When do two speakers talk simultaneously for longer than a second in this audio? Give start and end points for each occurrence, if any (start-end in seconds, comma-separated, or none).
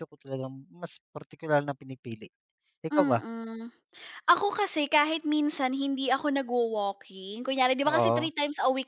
none